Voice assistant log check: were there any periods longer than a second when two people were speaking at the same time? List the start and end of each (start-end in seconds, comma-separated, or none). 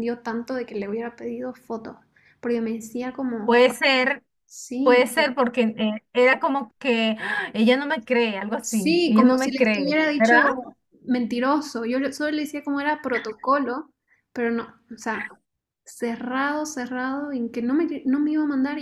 8.6-10.4